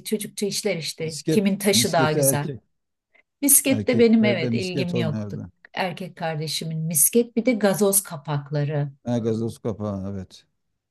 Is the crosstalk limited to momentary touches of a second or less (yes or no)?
no